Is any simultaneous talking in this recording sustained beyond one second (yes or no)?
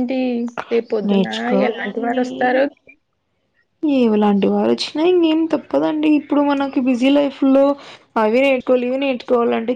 no